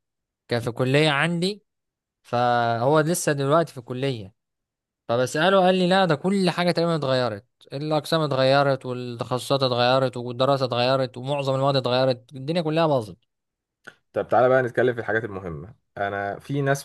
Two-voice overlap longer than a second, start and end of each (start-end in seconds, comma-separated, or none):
none